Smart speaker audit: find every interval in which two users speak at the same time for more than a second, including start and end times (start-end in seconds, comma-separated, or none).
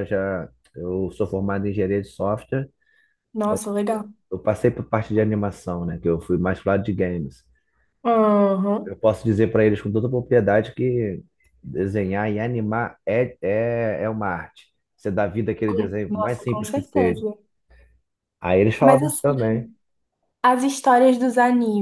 15.6-17.2